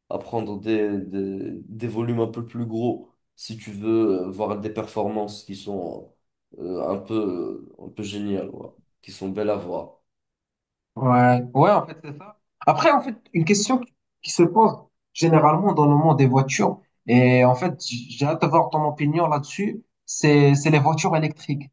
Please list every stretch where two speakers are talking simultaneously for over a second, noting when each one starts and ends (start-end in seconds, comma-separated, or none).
none